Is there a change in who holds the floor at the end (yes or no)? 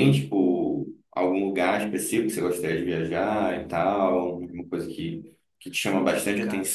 no